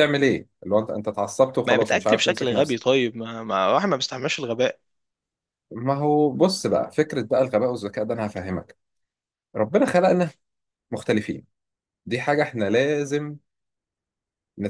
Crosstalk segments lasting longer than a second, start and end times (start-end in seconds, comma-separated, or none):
1.7-3.0